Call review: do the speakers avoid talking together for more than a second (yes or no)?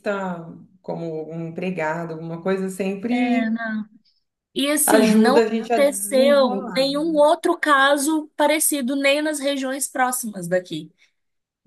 no